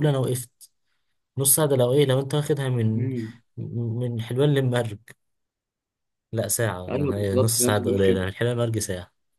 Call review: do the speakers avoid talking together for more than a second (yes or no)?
no